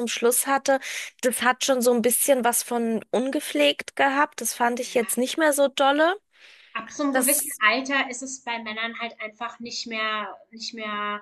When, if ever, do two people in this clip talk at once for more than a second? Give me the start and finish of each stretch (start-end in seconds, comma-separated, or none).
none